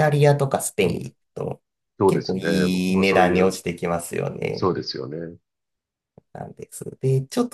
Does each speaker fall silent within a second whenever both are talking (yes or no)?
no